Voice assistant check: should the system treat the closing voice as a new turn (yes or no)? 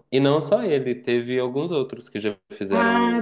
yes